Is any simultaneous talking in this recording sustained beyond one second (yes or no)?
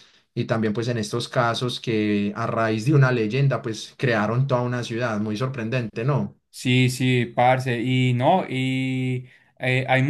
no